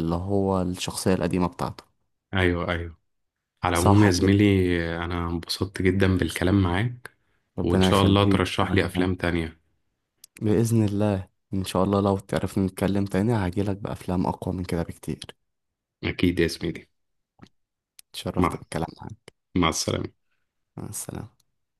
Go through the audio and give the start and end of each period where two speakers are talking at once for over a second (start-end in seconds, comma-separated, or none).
7.6-9.1